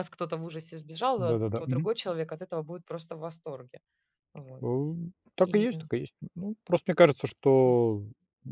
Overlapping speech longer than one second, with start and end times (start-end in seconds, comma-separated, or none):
none